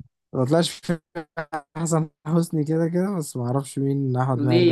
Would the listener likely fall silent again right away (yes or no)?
no